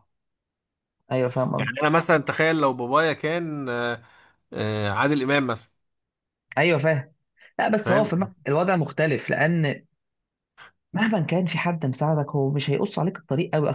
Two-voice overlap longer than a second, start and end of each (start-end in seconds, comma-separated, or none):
none